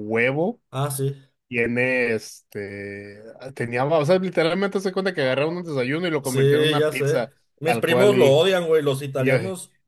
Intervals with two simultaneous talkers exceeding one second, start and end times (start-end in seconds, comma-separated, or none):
6.2-8.4